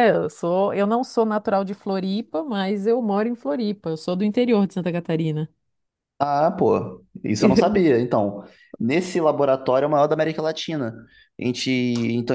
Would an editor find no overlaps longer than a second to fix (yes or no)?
yes